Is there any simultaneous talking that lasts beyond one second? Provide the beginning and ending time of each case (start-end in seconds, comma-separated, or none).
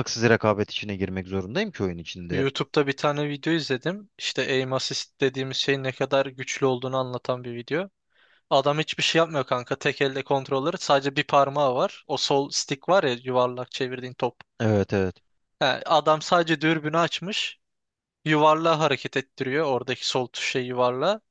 none